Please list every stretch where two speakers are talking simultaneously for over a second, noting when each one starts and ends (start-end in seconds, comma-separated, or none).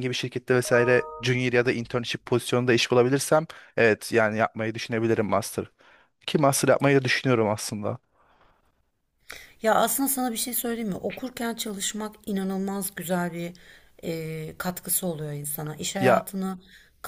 none